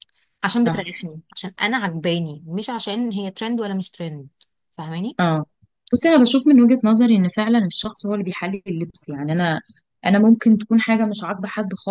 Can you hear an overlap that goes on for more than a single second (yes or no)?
no